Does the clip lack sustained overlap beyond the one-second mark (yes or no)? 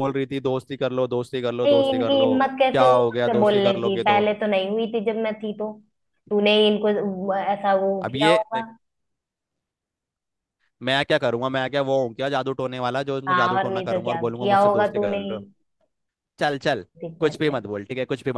no